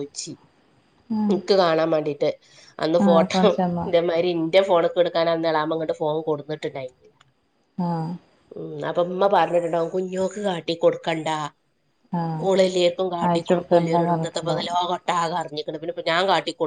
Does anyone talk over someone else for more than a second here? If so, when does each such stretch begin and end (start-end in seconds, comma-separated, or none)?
13.3-14.7